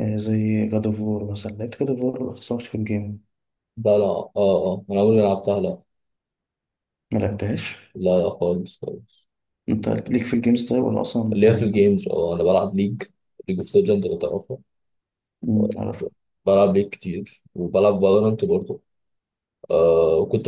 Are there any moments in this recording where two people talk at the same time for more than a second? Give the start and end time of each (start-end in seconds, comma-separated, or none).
none